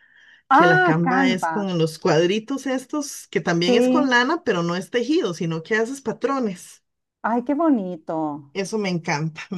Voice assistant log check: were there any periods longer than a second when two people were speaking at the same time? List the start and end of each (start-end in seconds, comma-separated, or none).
0.5-1.7